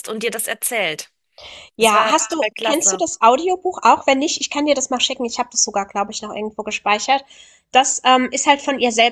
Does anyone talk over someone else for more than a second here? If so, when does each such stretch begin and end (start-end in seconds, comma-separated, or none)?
1.8-3.0